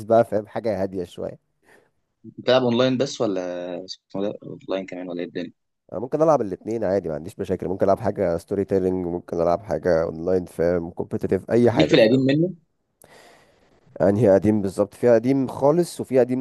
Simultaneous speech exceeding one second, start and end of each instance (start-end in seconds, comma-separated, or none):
none